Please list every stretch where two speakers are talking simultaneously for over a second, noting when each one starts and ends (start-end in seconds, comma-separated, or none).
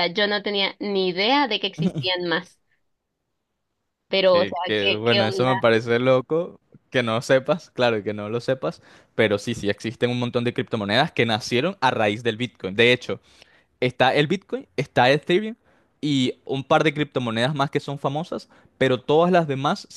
4.2-5.7